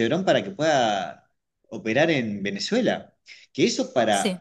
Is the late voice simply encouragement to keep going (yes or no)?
yes